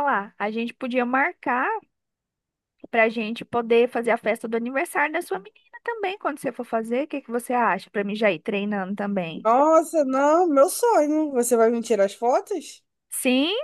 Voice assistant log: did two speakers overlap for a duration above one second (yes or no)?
no